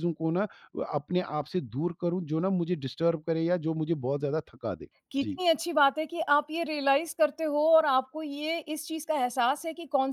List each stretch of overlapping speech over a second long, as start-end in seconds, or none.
none